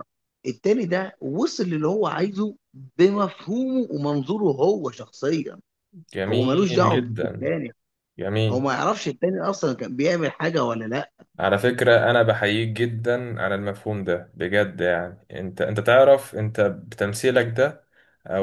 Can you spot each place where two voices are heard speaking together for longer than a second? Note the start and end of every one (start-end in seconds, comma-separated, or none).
6.3-7.5